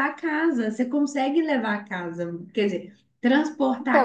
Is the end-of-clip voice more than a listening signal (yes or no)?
yes